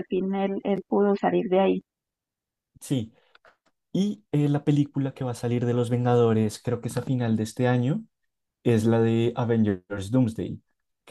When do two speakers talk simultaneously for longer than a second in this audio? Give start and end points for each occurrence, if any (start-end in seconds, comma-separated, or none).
none